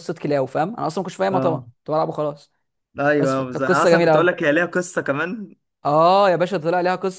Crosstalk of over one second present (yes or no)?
yes